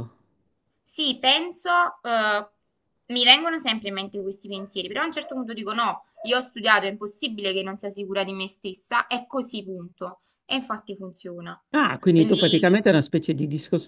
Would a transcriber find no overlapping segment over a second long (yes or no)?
yes